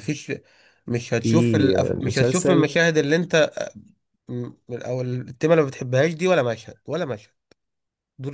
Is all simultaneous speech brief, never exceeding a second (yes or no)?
no